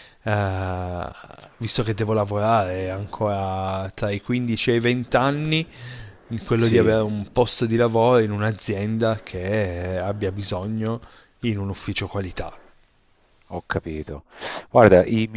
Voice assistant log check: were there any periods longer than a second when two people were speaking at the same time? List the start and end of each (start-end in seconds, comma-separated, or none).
none